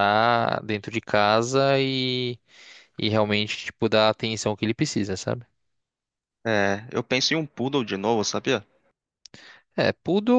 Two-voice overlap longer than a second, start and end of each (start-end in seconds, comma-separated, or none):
none